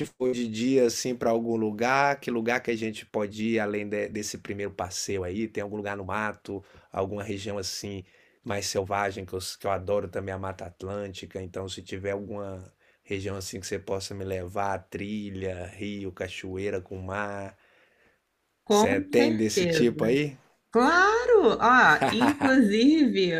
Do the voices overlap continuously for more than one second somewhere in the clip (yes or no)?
yes